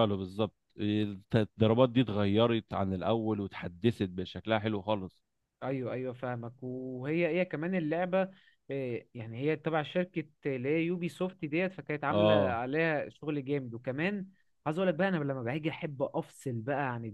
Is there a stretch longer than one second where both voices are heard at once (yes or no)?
no